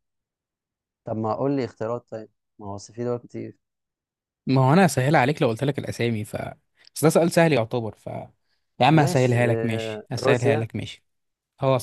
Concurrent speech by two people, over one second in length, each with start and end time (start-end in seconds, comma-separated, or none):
9.0-10.7